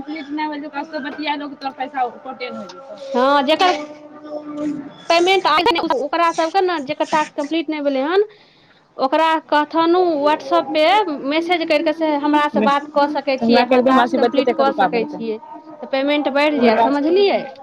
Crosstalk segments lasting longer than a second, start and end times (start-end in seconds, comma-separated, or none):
12.3-15.2